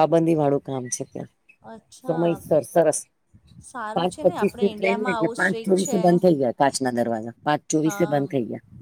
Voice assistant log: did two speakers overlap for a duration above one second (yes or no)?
yes